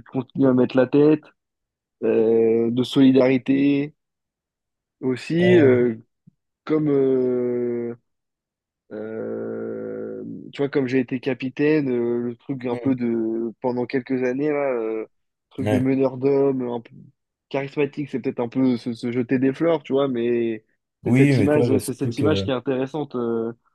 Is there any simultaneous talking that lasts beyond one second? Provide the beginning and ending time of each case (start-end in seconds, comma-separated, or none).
21.1-22.5